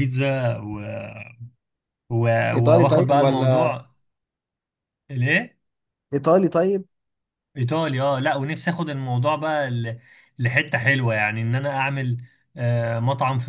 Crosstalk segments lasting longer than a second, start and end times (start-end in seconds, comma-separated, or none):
2.5-3.8